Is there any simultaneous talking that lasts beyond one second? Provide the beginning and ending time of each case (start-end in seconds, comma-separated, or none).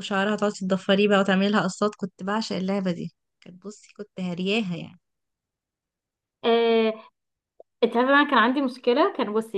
none